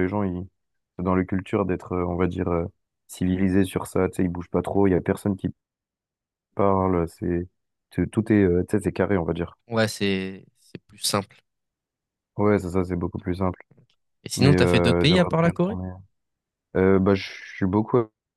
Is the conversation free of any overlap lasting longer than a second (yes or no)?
no